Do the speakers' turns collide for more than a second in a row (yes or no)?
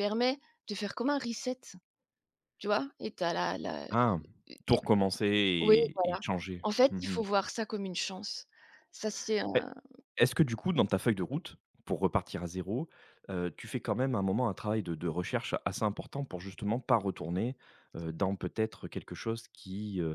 no